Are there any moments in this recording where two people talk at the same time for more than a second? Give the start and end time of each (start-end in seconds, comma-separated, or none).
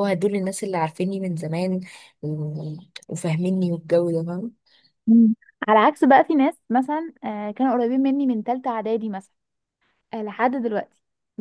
none